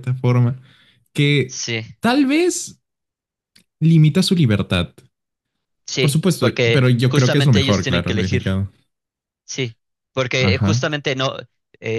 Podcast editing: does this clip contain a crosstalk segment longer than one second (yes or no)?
yes